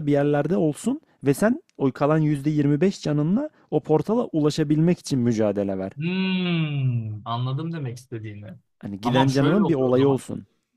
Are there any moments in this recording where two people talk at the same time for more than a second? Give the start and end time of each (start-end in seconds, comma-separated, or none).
9.0-10.2